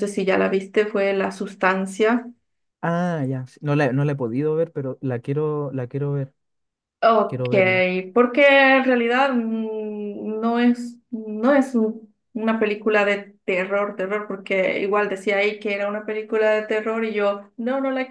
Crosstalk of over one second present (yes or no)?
no